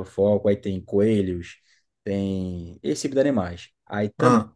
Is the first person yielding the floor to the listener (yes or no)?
no